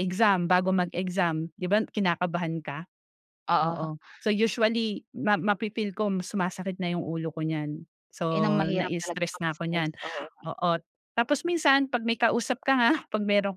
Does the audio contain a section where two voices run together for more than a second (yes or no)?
yes